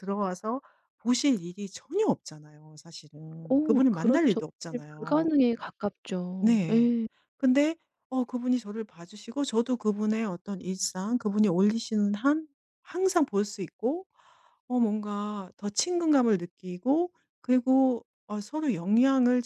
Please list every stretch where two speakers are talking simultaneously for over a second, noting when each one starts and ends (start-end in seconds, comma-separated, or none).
3.5-5.3